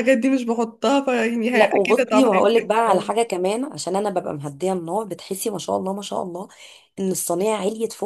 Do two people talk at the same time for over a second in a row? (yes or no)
yes